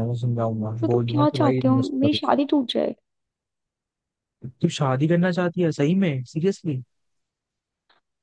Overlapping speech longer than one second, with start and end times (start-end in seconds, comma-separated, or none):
0.8-2.3